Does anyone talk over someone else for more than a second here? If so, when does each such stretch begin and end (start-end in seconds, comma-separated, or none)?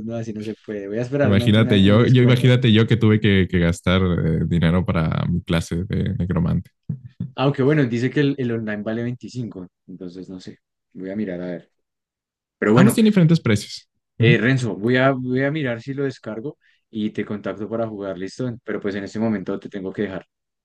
1.2-2.5